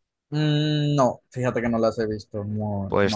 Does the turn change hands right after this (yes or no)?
yes